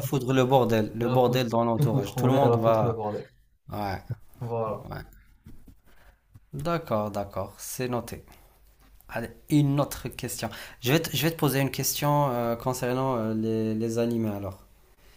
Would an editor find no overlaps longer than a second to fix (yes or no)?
no